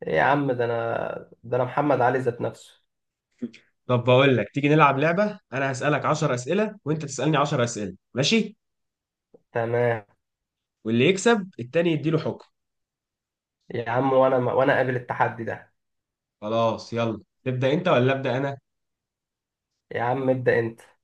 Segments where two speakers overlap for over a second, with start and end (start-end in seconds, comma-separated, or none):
none